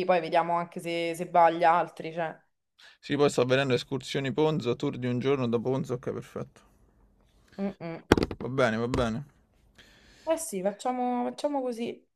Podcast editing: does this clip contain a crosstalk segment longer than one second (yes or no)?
no